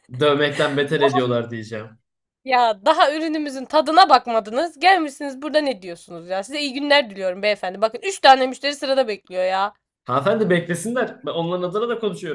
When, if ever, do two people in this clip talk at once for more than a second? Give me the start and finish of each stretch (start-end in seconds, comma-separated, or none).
none